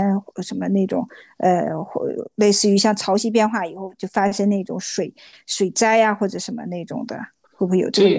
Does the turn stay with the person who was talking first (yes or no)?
no